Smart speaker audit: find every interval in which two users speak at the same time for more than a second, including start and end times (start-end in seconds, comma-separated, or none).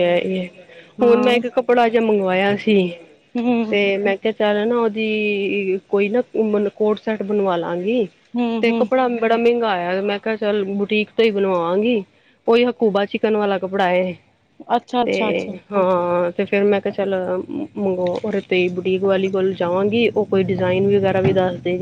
none